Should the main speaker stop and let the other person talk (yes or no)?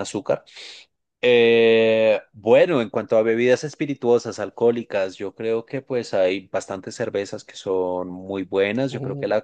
no